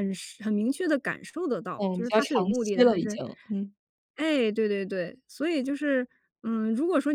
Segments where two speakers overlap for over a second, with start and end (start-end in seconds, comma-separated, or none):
1.8-3.2